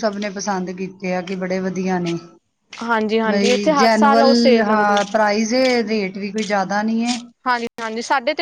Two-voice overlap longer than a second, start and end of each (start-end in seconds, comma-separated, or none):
3.3-5.0